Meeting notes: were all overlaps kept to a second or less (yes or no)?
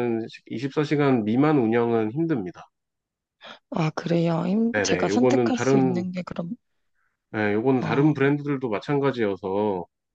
no